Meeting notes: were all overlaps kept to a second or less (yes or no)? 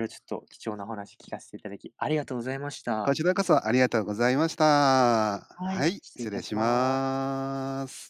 no